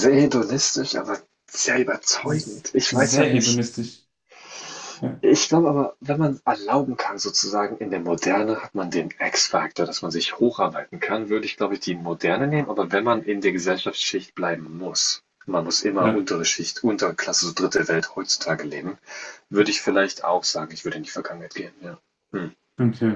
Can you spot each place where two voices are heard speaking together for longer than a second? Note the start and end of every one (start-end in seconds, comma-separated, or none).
2.2-3.6